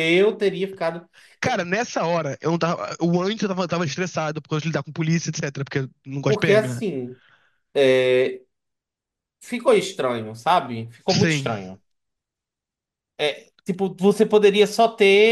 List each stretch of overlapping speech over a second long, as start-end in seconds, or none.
none